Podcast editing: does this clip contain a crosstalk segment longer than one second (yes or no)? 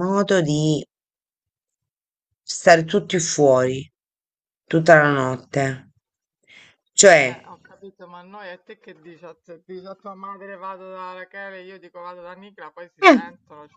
no